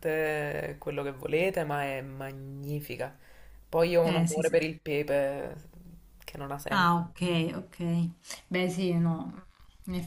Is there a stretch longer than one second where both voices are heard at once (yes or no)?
no